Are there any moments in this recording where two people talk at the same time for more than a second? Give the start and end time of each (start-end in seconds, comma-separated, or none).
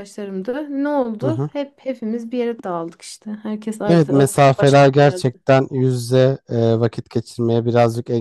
3.9-5.3